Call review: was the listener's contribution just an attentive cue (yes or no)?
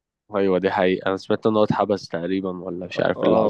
no